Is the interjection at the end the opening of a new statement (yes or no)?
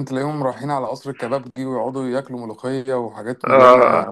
no